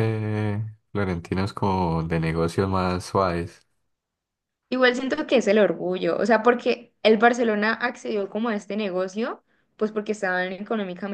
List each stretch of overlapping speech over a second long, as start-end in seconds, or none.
none